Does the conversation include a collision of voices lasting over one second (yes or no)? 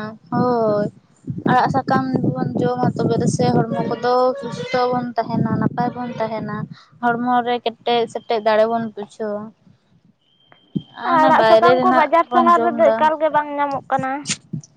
yes